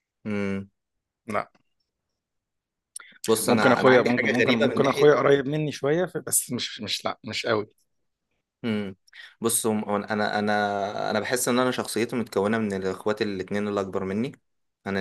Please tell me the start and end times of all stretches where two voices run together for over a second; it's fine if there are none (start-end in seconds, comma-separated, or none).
3.5-5.1